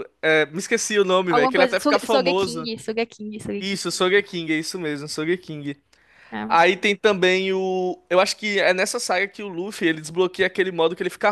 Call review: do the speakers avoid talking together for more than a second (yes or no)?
no